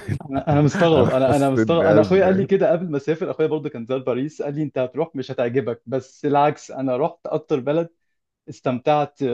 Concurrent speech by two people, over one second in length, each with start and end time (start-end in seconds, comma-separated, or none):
0.7-2.5